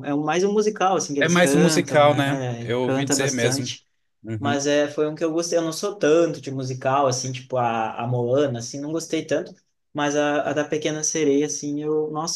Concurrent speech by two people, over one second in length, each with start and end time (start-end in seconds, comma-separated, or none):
1.2-3.7